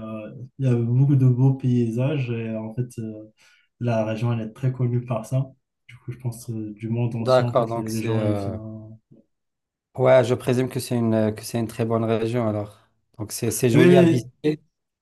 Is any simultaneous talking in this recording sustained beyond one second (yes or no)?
yes